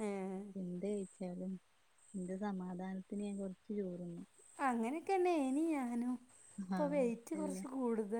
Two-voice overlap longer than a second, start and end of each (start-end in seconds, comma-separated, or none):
none